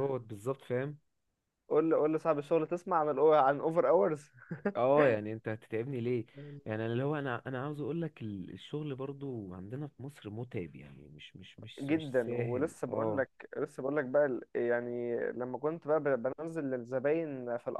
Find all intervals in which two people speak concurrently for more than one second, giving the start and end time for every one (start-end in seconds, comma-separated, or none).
11.8-13.2